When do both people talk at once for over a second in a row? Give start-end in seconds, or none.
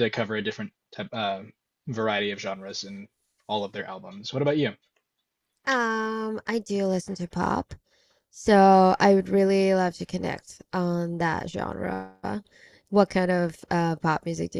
none